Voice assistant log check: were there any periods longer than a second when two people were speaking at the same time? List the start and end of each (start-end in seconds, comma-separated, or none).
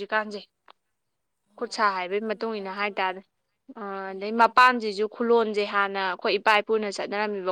1.6-3.1